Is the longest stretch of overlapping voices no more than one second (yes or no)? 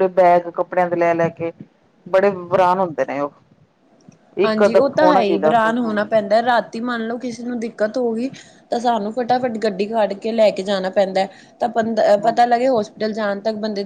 no